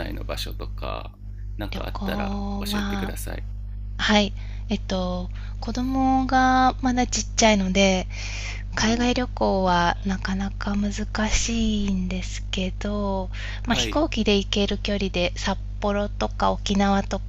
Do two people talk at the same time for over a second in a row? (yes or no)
yes